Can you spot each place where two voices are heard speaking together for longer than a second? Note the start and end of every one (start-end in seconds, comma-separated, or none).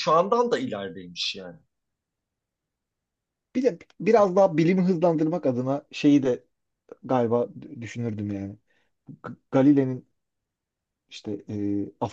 none